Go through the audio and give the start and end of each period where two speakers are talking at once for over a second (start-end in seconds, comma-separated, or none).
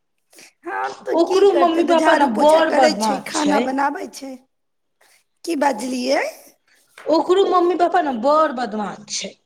1.2-3.6